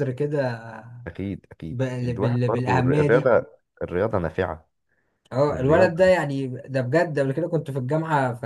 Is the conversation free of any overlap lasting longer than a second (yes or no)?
no